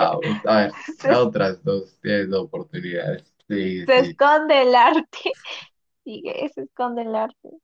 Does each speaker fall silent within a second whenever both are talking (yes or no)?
yes